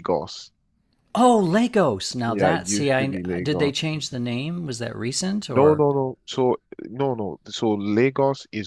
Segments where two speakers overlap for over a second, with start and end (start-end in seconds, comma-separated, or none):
2.3-3.7